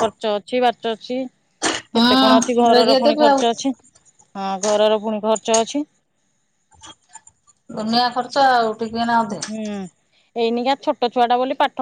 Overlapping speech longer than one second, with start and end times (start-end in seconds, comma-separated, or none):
2.0-3.4